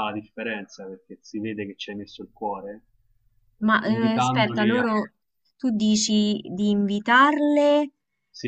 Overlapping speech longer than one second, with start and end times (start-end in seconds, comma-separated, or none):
3.6-4.8